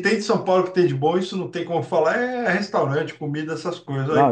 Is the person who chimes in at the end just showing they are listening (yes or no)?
no